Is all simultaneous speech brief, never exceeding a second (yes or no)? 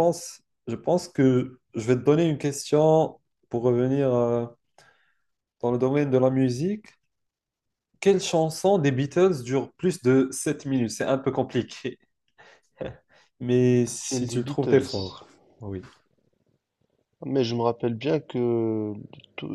no